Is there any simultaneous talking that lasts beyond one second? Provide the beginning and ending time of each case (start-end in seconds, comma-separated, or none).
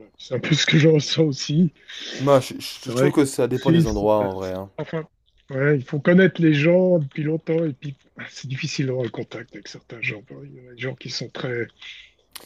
2.8-4.3